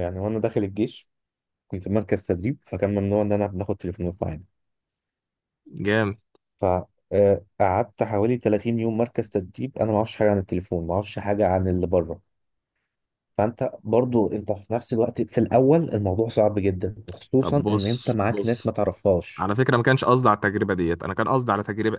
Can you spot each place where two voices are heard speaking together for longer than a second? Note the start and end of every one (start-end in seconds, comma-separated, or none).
17.4-18.7